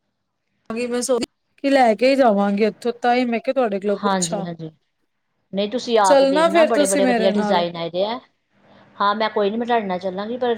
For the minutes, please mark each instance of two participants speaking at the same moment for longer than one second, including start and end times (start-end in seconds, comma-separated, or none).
6.1-7.6